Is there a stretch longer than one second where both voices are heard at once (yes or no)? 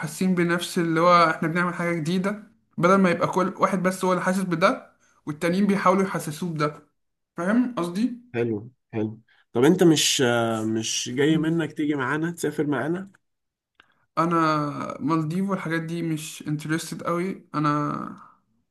no